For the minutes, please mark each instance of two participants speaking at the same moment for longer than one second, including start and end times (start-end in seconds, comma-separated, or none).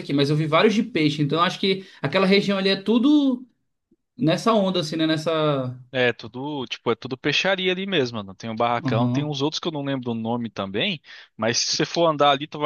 none